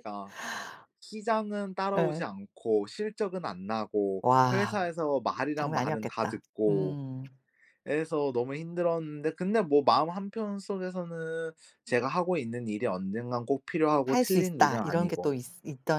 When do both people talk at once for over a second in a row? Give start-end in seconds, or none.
5.5-7.0, 14.1-15.3